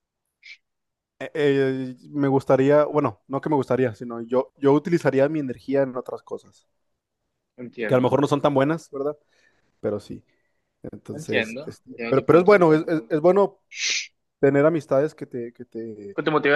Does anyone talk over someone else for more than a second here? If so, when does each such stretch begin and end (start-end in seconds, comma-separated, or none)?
11.1-12.7